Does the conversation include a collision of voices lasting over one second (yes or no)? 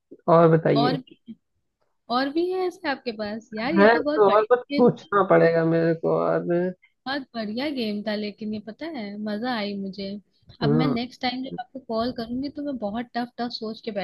yes